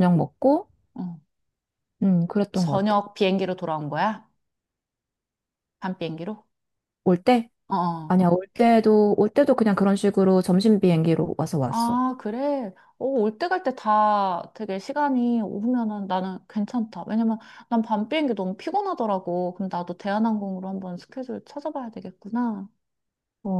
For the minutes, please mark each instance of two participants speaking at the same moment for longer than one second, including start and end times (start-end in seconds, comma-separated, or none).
none